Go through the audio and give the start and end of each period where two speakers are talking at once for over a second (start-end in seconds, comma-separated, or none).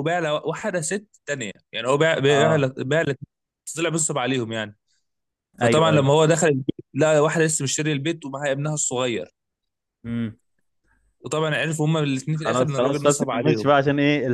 12.3-13.7